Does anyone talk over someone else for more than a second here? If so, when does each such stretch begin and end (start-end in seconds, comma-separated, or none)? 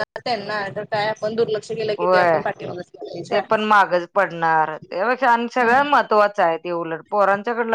none